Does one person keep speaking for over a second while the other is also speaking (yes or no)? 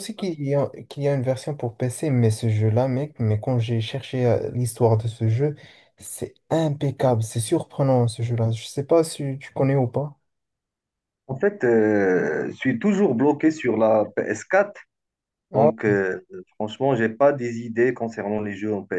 no